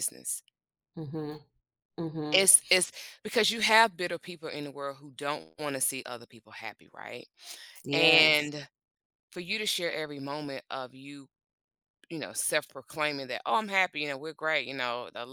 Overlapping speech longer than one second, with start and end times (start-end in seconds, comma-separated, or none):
none